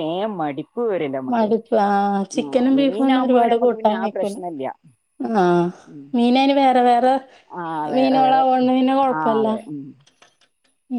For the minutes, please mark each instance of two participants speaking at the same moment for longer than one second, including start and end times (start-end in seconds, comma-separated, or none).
2.4-4.3